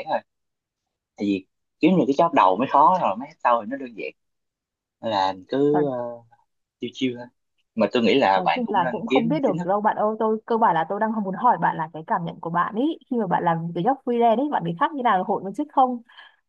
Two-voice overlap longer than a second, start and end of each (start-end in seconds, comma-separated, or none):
8.3-9.7